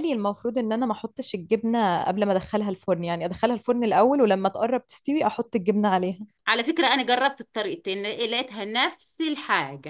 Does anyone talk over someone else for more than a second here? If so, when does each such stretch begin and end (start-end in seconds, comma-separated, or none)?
none